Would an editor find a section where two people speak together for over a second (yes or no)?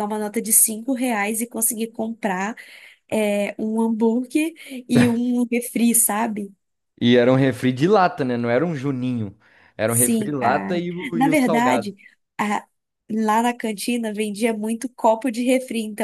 yes